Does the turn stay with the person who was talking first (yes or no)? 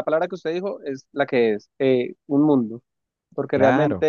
yes